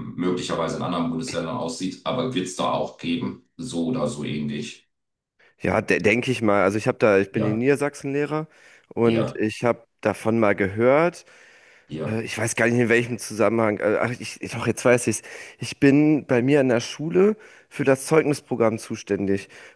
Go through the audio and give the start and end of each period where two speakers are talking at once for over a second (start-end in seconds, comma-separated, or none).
none